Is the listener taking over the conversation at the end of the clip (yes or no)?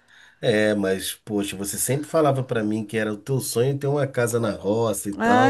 yes